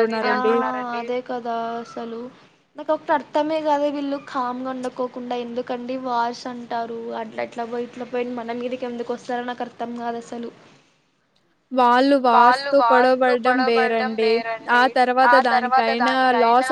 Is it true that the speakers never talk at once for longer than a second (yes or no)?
no